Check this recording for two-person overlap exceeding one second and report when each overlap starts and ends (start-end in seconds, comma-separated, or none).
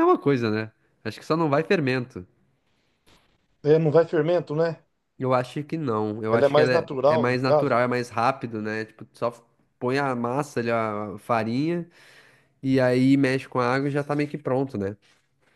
6.3-7.8